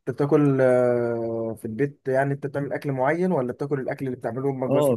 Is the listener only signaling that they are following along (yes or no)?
no